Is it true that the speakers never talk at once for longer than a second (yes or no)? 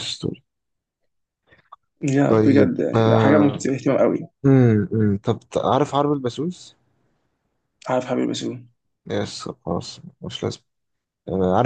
no